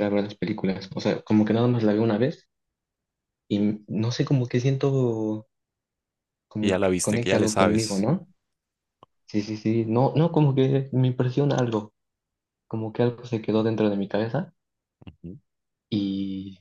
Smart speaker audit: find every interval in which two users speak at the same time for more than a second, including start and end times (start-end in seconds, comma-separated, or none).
6.6-8.1